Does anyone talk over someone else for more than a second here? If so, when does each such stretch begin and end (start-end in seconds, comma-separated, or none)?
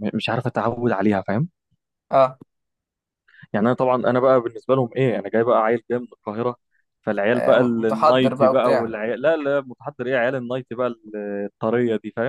7.3-8.9